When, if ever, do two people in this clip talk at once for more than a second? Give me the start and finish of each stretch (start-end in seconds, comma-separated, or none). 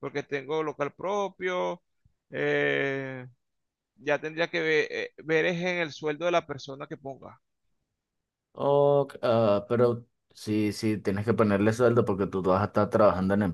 none